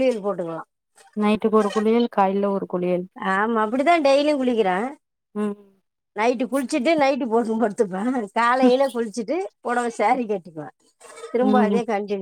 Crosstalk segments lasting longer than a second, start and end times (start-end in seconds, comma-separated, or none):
none